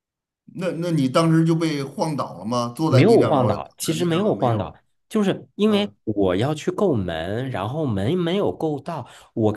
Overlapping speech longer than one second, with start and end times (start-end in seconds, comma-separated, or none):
2.9-4.8